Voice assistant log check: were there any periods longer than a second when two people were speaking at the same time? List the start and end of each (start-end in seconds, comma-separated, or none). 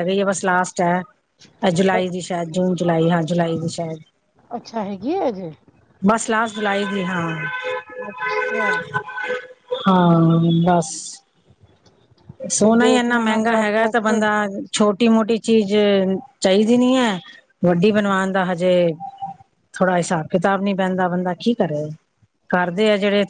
12.5-14.1